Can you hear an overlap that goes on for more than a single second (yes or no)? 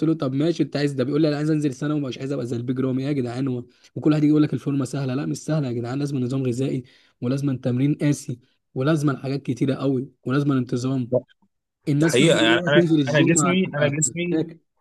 yes